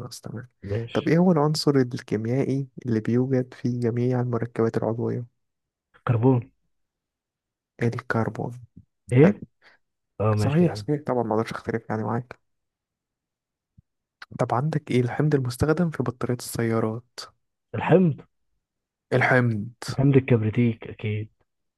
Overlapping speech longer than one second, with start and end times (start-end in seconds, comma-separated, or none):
none